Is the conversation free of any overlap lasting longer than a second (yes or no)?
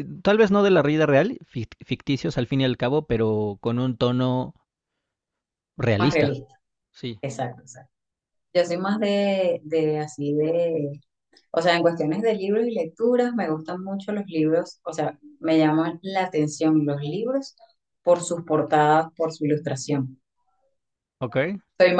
yes